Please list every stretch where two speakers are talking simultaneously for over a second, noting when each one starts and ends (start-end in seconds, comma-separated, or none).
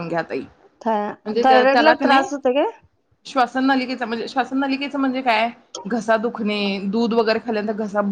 0.8-2.3